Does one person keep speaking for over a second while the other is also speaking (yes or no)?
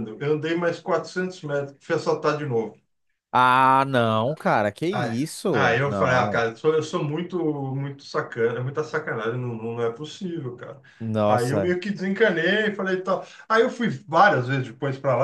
yes